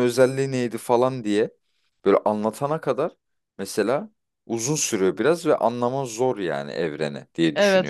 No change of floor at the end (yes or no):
no